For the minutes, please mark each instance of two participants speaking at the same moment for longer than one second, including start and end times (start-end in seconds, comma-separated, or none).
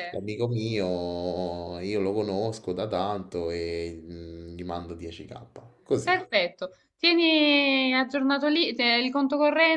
none